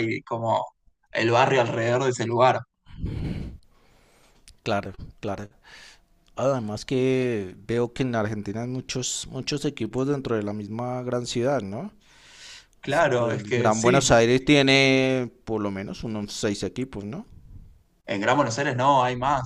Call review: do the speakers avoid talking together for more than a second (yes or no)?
no